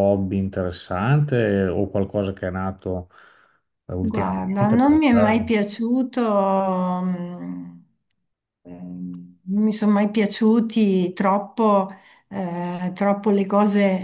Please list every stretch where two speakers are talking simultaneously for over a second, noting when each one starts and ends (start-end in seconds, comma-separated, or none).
4.0-5.5